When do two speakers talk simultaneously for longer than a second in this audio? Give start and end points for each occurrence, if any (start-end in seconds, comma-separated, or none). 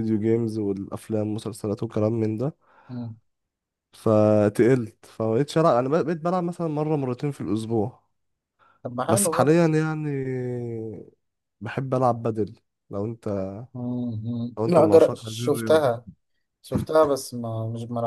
14.6-15.9